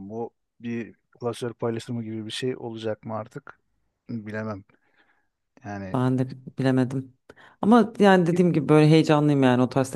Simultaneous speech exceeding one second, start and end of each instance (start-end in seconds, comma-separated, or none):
none